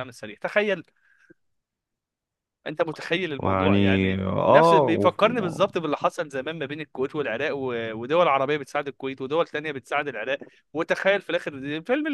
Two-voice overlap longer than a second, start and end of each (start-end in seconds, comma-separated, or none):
3.4-5.6